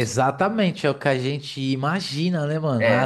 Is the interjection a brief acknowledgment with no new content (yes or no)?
yes